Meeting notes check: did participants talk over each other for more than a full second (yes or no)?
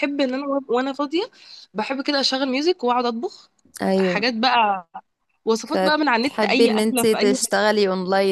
yes